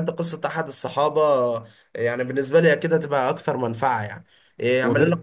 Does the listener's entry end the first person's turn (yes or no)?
no